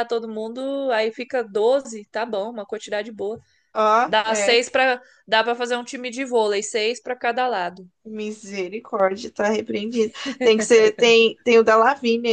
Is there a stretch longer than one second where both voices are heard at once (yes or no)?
no